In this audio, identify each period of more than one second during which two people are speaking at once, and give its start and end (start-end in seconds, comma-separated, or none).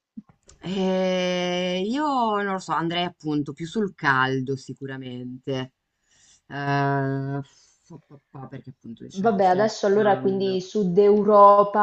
9.2-10.6